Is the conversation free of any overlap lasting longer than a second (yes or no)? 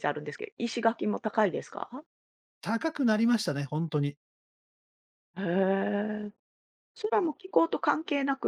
yes